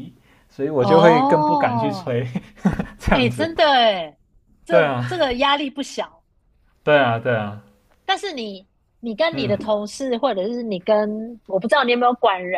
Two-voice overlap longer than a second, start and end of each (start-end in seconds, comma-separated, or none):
0.8-2.1